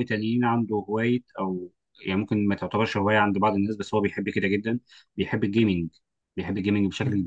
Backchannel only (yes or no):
yes